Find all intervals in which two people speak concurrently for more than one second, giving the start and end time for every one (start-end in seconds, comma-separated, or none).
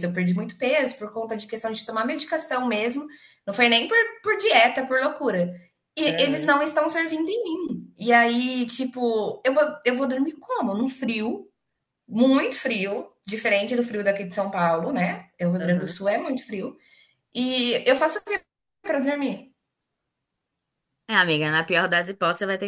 none